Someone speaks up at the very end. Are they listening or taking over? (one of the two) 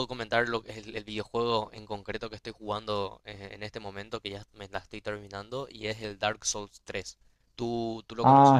taking over